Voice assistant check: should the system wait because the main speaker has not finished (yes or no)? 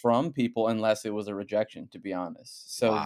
yes